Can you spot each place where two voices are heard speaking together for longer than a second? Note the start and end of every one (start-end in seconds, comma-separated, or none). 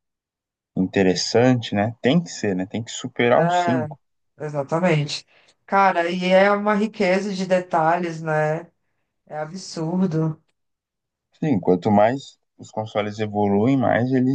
none